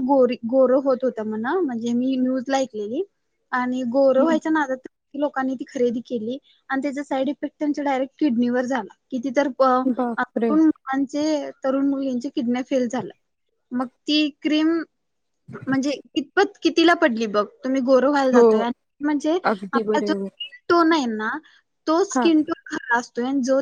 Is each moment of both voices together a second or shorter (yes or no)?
yes